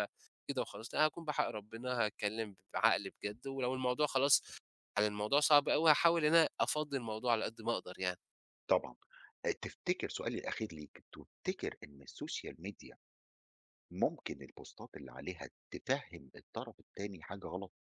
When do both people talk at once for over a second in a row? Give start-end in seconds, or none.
none